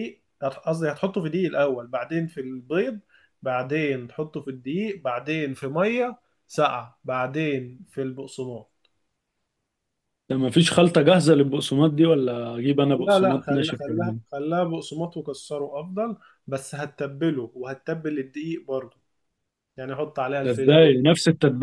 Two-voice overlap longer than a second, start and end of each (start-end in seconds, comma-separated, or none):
12.9-14.2